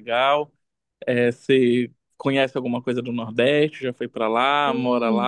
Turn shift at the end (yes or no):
yes